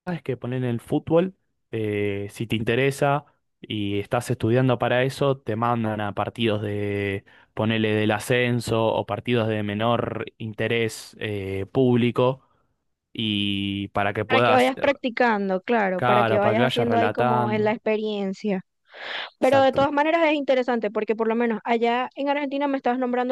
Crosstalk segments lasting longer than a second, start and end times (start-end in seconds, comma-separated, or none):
16.0-17.8